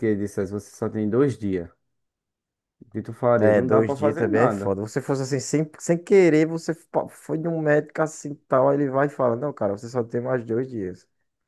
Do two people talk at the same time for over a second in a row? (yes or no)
yes